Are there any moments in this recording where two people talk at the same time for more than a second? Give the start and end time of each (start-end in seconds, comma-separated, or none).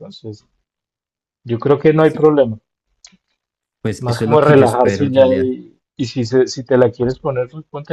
4.0-5.5